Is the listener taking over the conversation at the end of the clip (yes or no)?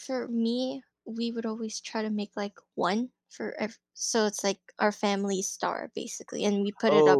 yes